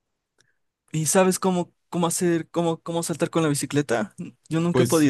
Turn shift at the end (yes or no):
yes